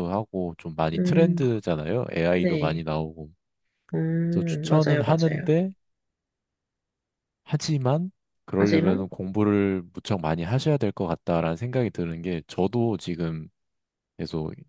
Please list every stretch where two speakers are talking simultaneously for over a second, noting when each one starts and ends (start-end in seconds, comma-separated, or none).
4.3-5.5